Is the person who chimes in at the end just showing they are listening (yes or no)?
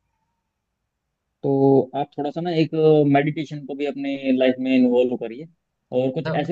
yes